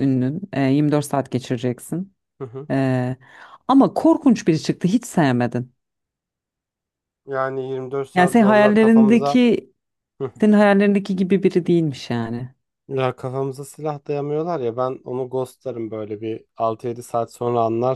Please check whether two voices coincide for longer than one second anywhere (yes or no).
yes